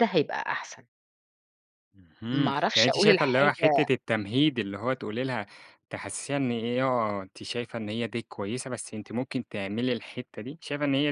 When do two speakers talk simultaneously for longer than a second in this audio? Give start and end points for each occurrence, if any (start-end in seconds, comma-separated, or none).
2.3-3.7